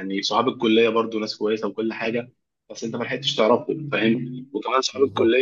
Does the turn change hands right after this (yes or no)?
no